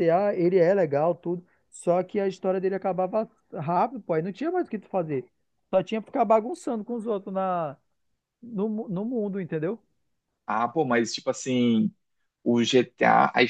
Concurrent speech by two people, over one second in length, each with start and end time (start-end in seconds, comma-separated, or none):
none